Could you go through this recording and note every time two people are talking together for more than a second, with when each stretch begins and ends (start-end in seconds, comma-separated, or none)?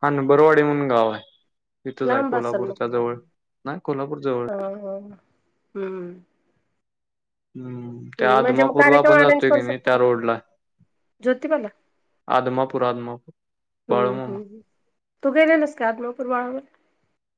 8.2-10.0